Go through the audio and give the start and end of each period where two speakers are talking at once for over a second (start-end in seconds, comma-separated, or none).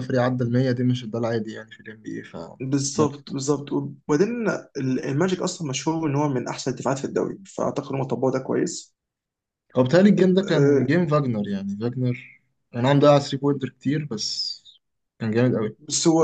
none